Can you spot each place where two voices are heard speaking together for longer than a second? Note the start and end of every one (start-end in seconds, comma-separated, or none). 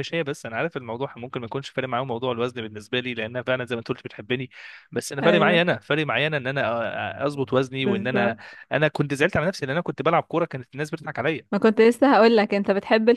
none